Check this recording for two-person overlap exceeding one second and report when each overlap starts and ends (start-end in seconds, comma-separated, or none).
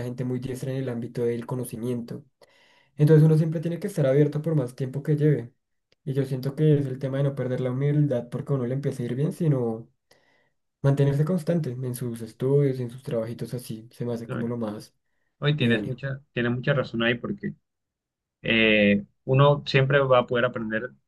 none